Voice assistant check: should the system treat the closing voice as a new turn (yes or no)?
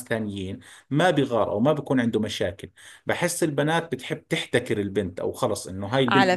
yes